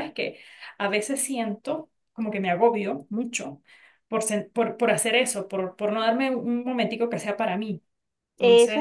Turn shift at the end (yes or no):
yes